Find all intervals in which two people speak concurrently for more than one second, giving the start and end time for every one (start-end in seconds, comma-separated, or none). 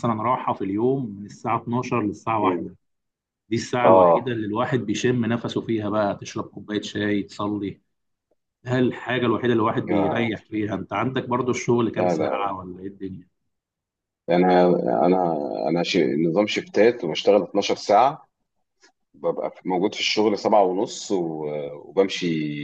none